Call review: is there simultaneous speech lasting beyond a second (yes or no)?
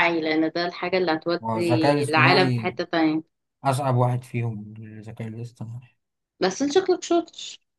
yes